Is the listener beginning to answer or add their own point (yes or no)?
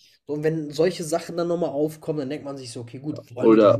yes